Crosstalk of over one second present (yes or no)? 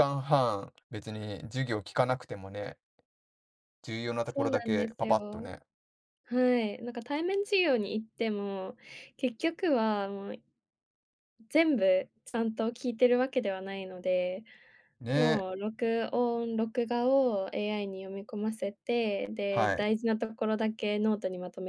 yes